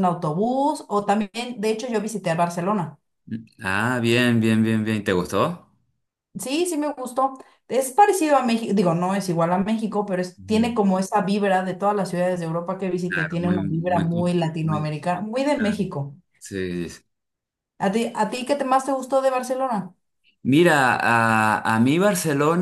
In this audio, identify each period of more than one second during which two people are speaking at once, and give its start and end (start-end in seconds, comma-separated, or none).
13.1-14.9